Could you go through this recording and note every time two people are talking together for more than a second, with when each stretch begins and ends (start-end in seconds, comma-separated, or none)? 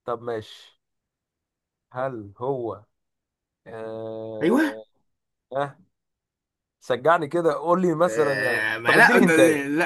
8.1-9.3